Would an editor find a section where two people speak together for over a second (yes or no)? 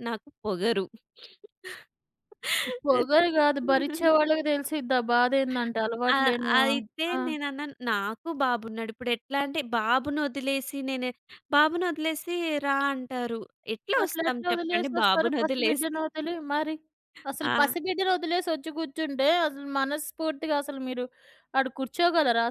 yes